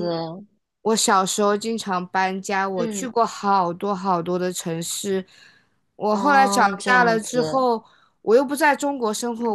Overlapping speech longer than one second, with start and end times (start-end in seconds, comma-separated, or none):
6.1-7.7